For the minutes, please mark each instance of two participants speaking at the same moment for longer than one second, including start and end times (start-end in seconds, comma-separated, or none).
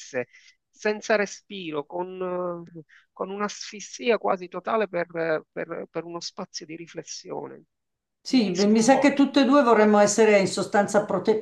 8.3-9.6